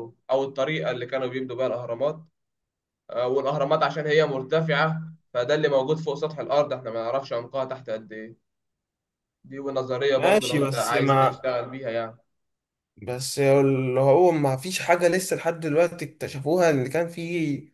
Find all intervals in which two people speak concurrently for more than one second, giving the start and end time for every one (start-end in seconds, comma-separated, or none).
10.2-11.5